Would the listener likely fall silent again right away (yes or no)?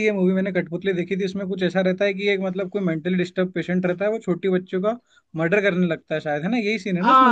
no